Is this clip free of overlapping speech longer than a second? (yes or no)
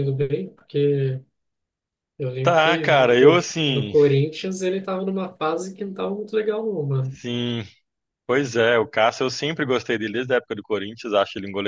no